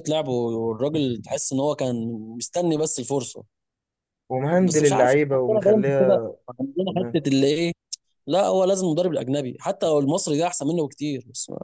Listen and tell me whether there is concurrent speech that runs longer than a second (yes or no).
yes